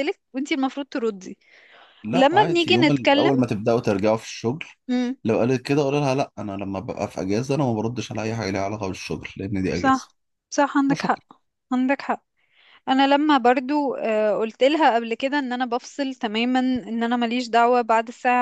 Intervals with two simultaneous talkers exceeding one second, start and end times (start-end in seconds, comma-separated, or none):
2.1-3.3